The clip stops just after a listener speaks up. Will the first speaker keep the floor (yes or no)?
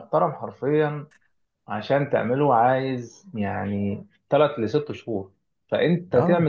yes